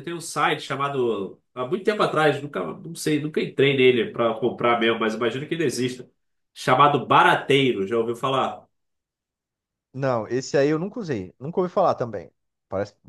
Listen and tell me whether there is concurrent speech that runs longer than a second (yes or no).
no